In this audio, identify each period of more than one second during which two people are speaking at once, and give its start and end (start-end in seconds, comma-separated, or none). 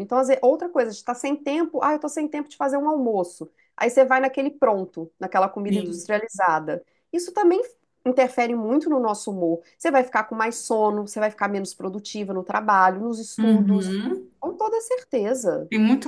none